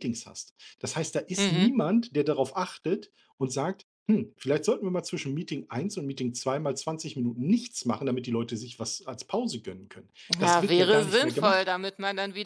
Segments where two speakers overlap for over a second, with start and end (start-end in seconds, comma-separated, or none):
10.4-11.8